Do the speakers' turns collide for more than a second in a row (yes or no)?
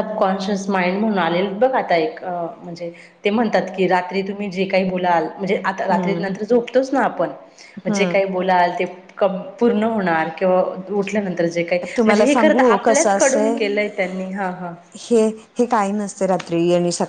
yes